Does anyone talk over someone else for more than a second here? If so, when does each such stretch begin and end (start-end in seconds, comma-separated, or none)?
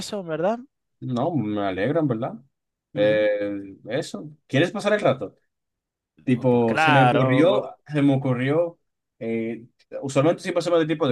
6.3-7.7